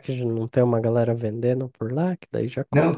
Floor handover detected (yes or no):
yes